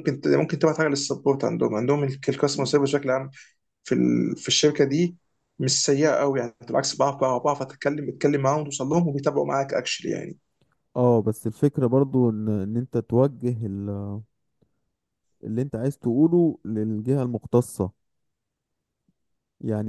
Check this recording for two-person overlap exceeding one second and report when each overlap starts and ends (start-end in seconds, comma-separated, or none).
none